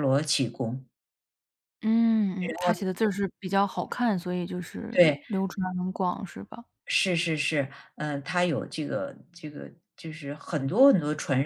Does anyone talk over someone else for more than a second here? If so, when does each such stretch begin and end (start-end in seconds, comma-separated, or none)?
none